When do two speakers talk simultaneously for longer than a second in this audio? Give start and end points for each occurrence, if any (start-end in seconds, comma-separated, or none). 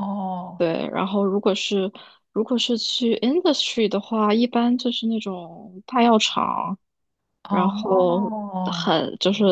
7.5-8.9